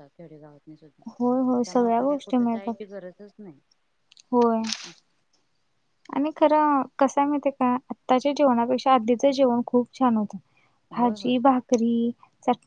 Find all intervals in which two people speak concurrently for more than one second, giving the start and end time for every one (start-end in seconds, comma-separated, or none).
1.2-2.8